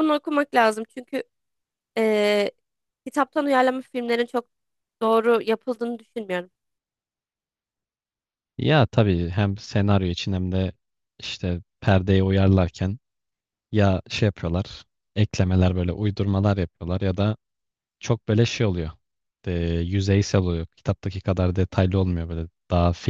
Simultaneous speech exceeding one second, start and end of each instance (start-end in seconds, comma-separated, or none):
none